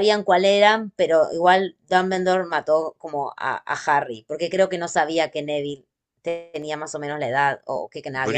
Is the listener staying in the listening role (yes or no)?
no